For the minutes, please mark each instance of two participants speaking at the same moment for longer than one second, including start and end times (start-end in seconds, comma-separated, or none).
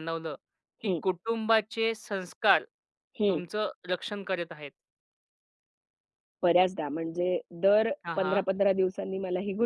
none